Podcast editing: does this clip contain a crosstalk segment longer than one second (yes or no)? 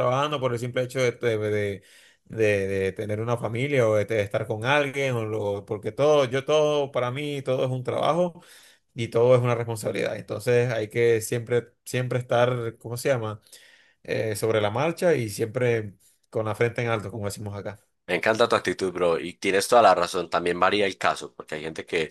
no